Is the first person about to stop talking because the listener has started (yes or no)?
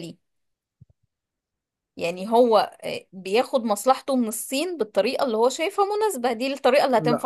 yes